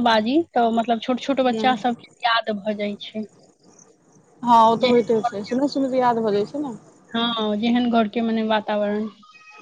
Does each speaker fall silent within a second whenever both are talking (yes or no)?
yes